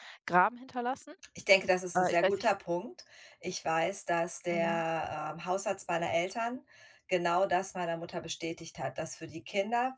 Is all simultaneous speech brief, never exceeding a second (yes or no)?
yes